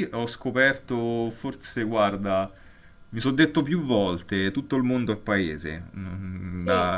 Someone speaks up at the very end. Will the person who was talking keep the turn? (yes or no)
yes